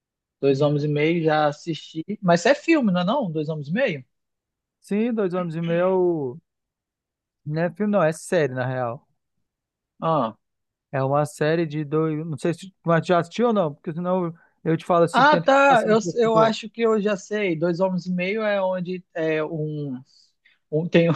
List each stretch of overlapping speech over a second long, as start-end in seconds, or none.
15.1-16.6